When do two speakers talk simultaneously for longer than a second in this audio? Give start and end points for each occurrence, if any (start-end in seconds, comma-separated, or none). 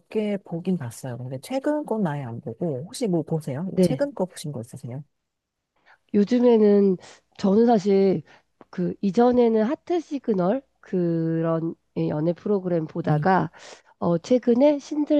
none